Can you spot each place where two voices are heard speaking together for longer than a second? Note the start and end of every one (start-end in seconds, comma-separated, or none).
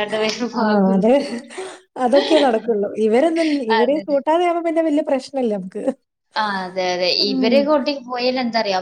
none